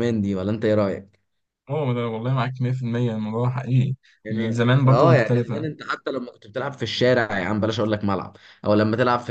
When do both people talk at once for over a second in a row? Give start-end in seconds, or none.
4.2-5.7